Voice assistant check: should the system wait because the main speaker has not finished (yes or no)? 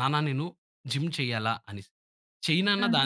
yes